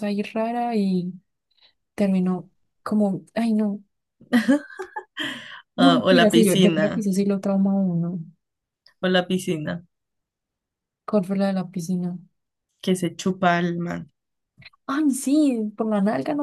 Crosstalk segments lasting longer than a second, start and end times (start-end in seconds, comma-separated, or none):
5.8-7.1